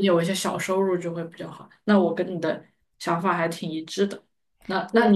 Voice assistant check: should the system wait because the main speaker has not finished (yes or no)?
yes